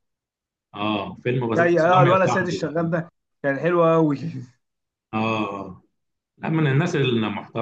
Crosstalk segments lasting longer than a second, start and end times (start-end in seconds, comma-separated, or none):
1.6-3.0